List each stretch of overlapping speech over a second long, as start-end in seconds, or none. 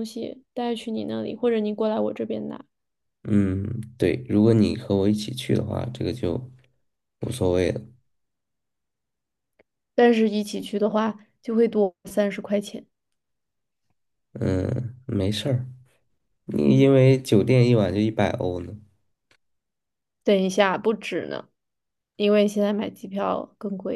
none